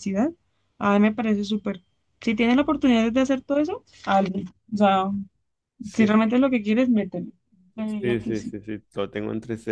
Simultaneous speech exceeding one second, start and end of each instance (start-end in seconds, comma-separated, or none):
none